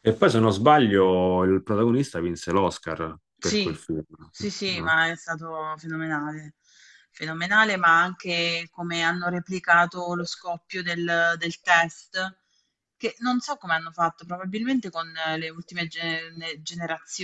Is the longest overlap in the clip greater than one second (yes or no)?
no